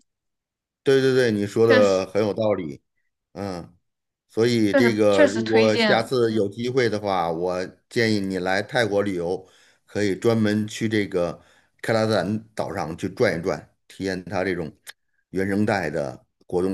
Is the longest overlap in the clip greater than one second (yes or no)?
yes